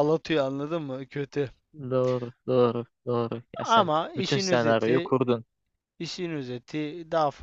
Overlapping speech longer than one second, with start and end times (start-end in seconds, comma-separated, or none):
3.7-5.1